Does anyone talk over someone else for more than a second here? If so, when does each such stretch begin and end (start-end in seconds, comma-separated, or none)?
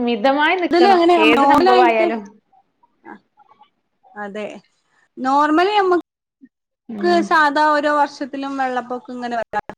none